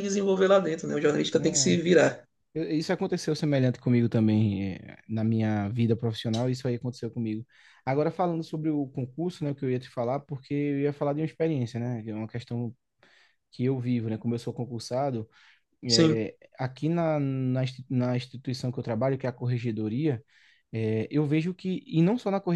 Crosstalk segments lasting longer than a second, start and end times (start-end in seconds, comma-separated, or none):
none